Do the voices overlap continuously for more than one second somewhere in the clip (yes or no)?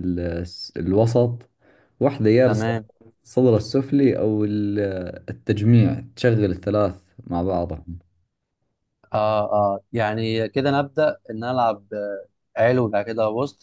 no